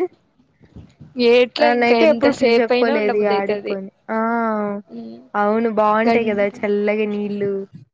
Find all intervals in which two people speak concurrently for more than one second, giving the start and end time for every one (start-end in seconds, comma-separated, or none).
1.6-3.8